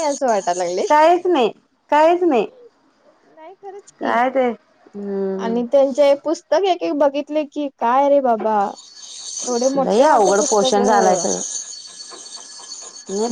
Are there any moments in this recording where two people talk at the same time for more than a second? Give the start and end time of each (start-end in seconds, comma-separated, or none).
9.8-11.4